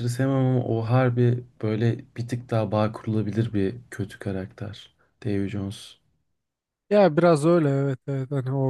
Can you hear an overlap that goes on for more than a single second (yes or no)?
no